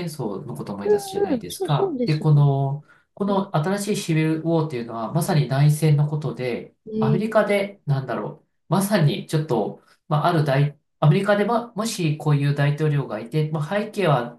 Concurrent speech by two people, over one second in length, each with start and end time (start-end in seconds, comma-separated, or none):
0.8-2.3